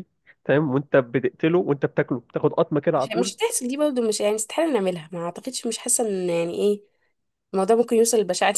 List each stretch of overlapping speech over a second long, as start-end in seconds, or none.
none